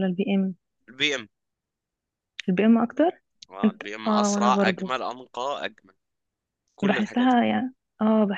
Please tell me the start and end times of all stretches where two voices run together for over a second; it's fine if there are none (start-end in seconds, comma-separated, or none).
3.6-4.9